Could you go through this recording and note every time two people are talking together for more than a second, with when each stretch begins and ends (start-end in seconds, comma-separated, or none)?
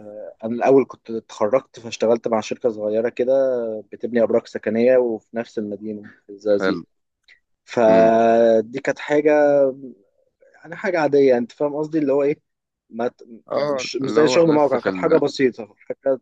13.5-15.2